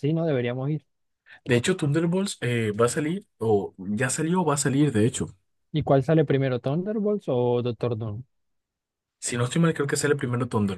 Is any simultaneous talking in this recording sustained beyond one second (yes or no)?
no